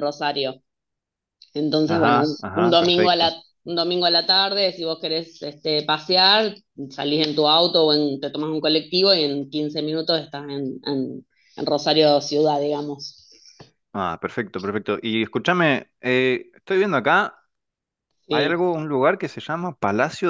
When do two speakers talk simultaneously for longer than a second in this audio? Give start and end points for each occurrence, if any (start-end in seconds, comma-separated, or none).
1.9-3.3